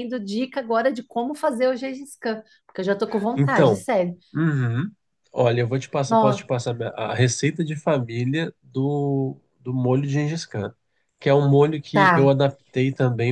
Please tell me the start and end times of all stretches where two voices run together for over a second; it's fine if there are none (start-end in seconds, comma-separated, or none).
none